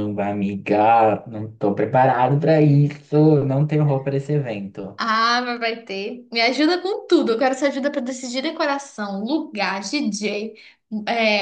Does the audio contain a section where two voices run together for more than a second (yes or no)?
no